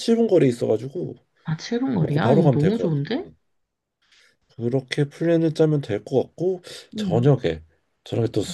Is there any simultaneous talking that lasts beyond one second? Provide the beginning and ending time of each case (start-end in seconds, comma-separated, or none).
2.0-3.3